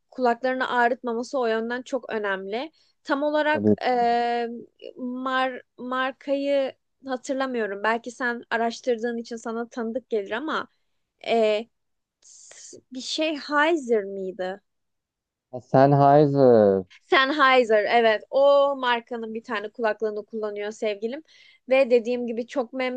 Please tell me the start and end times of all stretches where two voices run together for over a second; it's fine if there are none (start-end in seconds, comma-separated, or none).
none